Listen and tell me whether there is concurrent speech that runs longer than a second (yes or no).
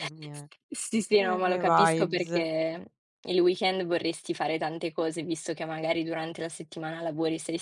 yes